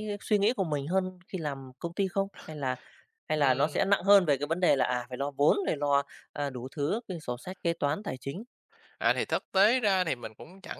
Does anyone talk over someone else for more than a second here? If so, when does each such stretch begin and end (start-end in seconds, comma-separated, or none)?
none